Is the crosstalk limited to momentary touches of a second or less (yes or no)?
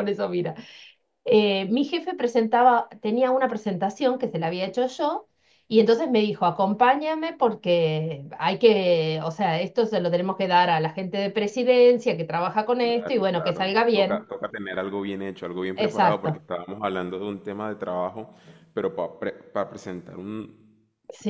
no